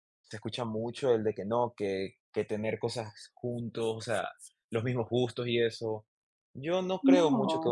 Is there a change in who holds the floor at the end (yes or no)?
no